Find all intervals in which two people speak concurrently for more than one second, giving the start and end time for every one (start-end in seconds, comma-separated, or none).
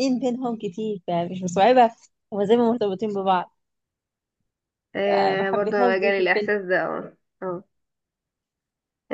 5.0-6.5